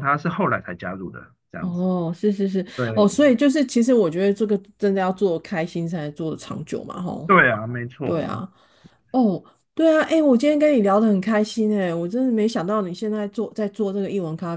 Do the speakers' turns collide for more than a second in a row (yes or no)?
no